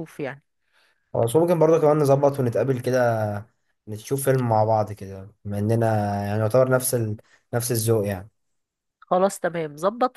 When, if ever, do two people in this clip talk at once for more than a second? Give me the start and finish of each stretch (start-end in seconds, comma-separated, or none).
none